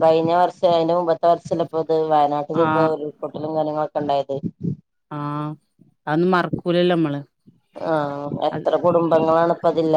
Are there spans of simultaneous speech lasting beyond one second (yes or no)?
no